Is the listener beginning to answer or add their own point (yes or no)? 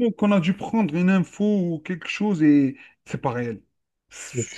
no